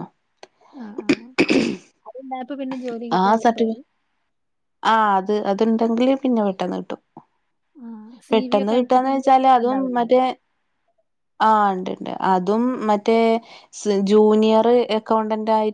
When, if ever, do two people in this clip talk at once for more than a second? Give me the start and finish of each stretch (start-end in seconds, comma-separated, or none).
8.3-10.0